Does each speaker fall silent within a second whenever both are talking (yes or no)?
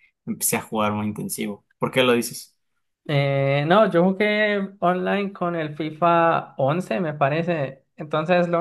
yes